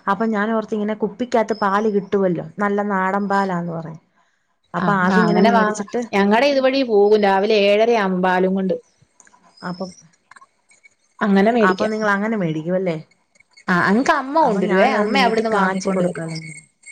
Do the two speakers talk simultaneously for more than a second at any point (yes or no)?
yes